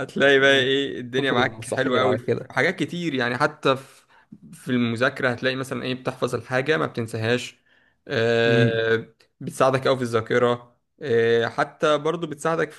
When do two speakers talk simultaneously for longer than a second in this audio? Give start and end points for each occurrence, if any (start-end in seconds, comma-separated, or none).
1.2-2.5